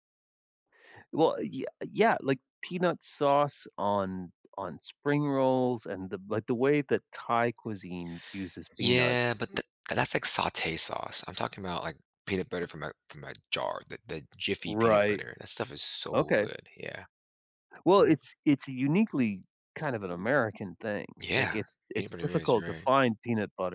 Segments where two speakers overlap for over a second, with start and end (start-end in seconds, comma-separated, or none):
21.2-22.9